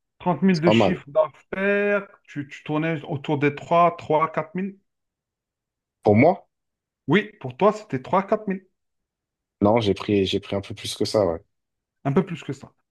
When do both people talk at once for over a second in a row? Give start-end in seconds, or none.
none